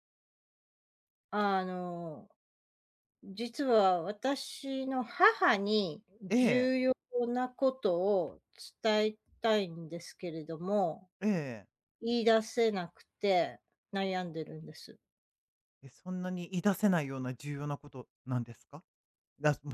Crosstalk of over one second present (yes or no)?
no